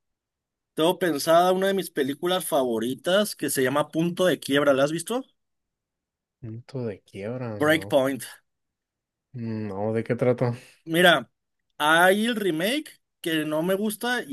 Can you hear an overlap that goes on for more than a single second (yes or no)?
no